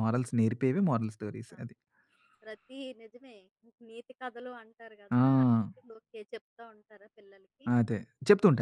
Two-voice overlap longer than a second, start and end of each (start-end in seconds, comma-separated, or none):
none